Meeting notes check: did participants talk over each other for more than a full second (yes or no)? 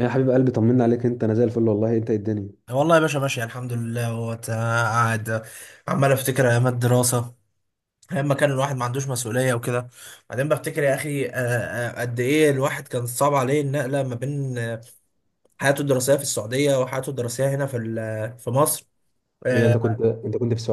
no